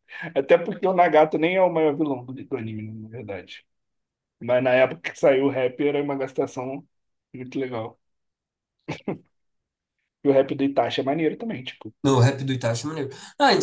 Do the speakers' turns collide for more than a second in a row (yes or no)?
no